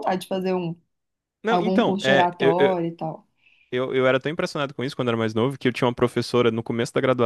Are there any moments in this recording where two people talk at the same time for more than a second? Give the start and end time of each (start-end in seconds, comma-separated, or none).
1.5-2.7